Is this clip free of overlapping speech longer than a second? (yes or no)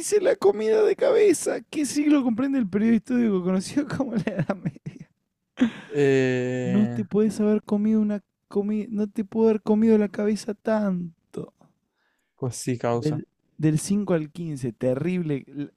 yes